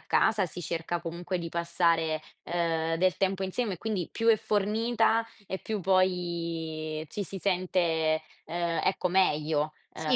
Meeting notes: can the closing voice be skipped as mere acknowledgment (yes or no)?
no